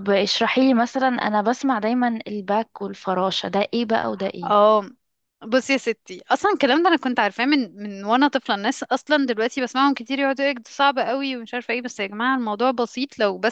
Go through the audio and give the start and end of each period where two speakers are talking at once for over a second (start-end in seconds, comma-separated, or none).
none